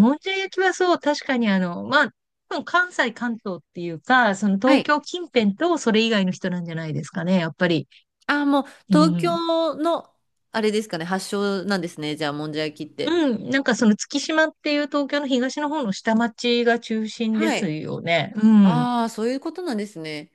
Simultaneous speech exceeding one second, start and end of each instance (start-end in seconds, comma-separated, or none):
none